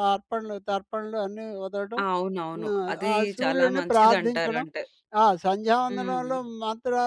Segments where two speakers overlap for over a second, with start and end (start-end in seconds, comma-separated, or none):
2.6-4.6